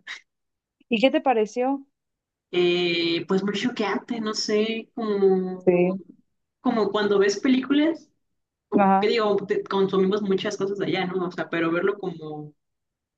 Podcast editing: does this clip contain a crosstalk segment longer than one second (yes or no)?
no